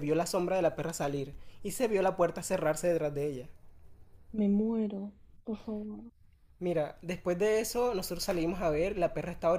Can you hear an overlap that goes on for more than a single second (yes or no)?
no